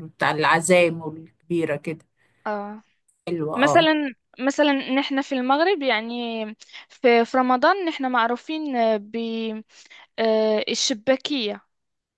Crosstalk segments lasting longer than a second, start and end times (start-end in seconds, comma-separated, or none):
none